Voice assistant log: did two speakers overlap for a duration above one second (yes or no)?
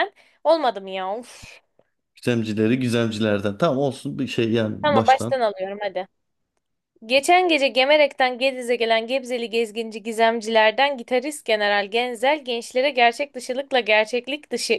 no